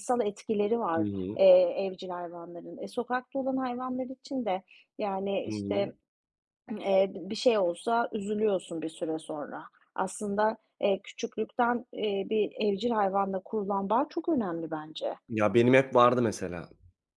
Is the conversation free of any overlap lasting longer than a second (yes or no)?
yes